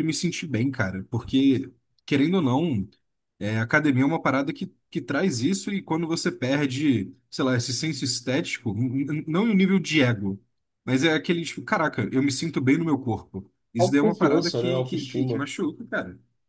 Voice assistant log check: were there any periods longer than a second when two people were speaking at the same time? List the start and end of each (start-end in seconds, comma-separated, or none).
13.8-15.5